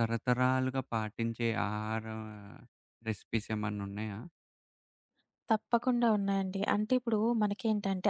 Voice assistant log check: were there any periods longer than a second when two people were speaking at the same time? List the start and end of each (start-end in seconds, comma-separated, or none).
none